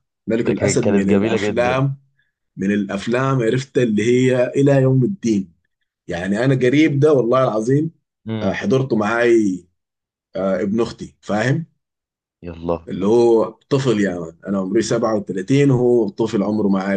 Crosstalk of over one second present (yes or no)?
yes